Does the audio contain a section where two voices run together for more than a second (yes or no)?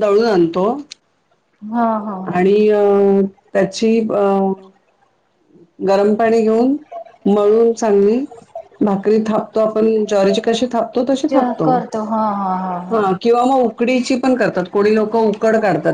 no